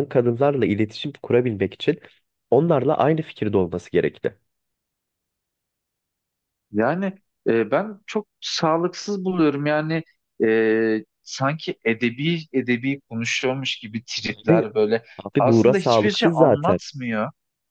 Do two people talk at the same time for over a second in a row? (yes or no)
yes